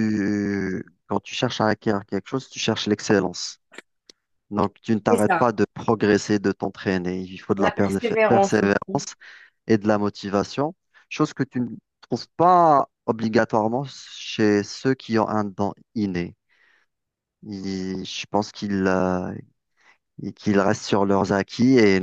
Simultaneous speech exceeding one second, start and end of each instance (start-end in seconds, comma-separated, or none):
7.6-9.0